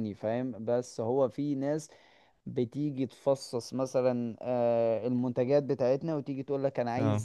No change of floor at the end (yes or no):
yes